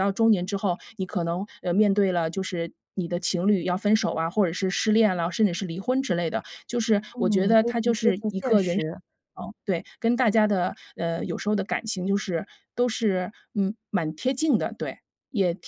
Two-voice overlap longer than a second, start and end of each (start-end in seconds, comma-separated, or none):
7.1-8.9